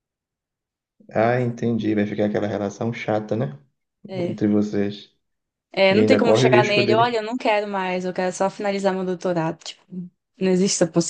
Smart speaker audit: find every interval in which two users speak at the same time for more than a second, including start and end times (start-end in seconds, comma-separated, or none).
5.9-7.2